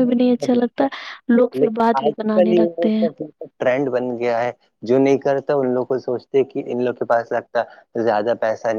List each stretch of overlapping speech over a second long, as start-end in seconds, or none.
1.6-3.1